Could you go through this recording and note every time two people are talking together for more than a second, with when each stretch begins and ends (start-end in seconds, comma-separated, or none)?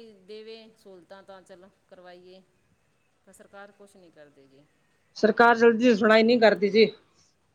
none